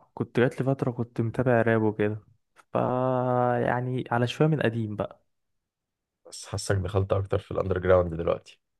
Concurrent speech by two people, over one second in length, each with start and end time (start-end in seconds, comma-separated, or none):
none